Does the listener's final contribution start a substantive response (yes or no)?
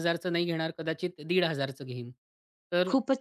no